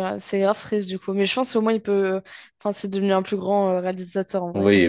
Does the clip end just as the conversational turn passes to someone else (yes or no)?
yes